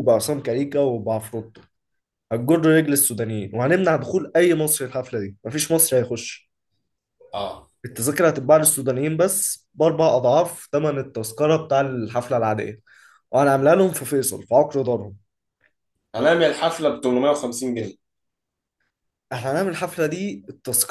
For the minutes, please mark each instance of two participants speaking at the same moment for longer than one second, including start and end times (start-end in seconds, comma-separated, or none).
none